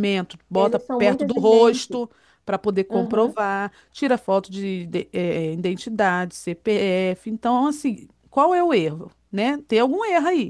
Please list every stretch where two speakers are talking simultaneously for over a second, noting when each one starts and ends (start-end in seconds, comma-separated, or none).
0.6-2.0